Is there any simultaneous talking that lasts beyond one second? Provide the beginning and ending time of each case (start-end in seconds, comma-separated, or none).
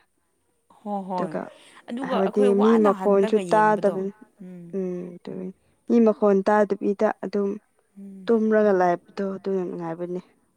2.1-4.0